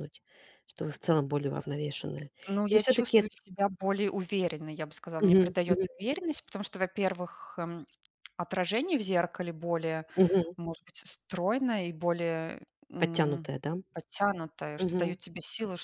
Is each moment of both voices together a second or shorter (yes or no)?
yes